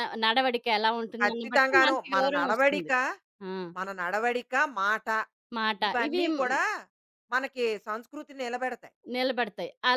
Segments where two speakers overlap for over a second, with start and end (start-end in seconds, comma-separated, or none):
1.2-2.9